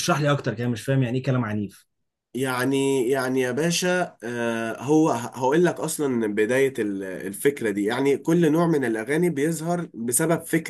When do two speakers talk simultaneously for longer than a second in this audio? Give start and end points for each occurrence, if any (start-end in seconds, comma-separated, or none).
none